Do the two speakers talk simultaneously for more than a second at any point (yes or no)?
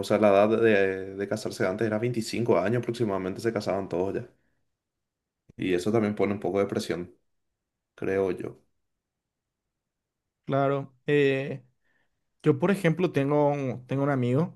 no